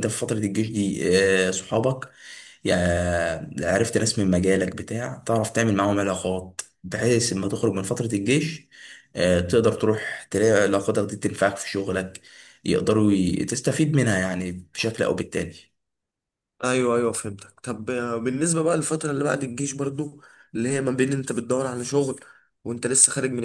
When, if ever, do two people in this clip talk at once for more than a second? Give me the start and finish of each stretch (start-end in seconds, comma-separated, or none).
none